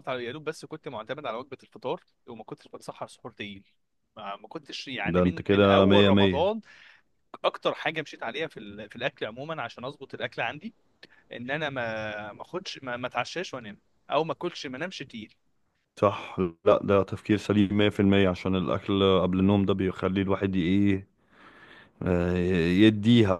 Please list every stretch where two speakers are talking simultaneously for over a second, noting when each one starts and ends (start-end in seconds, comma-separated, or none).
5.0-6.6